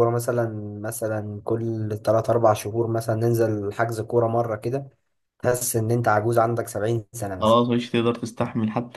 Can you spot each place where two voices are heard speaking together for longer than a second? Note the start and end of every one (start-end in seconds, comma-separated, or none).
none